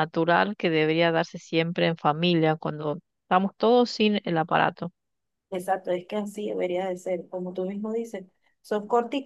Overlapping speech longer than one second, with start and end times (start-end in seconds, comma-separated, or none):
none